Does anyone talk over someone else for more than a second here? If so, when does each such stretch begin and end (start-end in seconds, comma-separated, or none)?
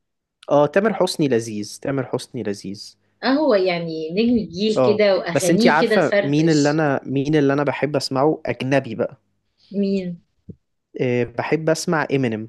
4.8-6.8